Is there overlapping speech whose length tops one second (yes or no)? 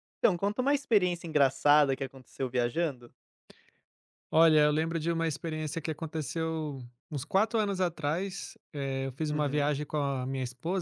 no